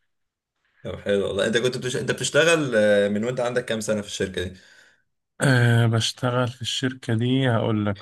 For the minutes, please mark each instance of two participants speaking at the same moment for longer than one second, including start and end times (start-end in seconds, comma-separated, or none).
none